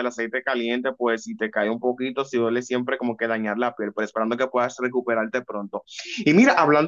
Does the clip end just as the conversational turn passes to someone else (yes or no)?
no